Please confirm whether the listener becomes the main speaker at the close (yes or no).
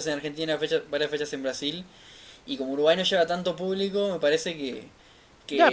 yes